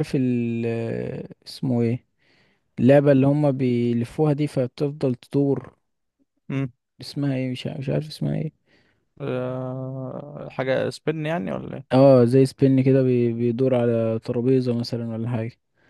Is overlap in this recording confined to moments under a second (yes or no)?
yes